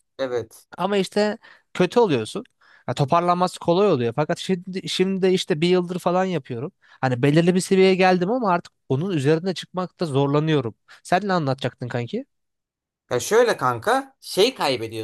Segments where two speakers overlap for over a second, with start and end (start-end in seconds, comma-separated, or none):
none